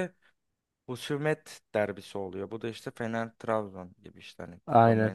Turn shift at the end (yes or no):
no